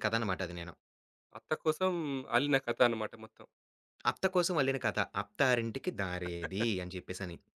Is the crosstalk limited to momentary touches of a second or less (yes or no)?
yes